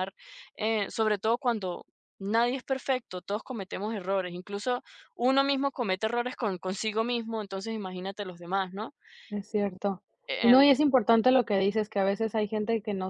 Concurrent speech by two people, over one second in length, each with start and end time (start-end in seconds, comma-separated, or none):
none